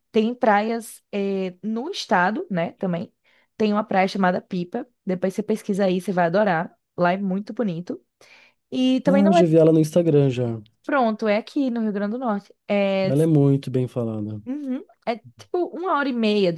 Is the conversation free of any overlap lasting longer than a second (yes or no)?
yes